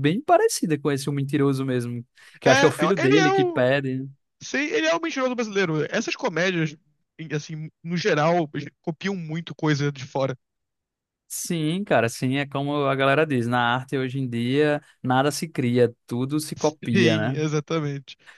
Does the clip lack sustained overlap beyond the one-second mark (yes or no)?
no